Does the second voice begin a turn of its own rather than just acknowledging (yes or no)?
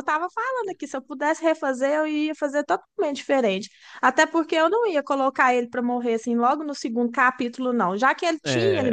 no